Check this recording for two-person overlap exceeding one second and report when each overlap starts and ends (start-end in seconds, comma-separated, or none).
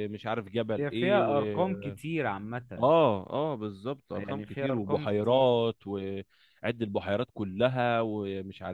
4.2-5.6